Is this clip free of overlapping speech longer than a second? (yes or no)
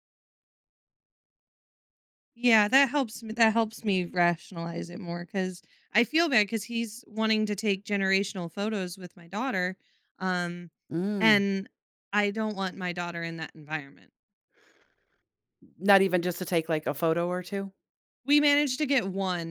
yes